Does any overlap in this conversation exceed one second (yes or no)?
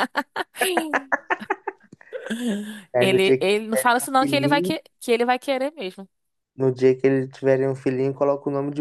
yes